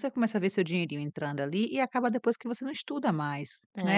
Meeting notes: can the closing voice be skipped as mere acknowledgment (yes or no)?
no